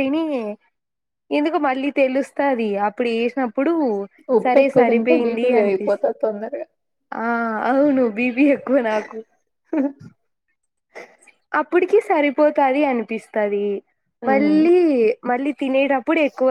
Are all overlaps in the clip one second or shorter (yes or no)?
no